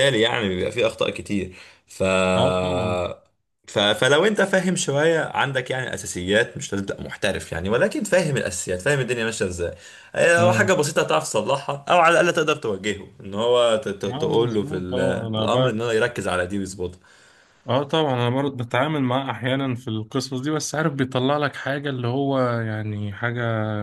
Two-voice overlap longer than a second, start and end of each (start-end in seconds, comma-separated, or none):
14.1-15.4